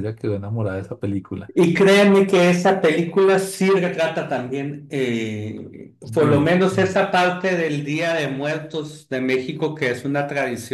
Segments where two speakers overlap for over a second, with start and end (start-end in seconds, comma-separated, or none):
none